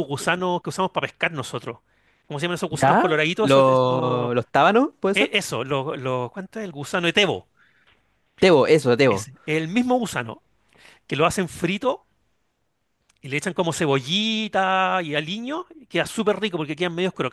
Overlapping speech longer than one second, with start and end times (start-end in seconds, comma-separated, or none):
2.7-4.3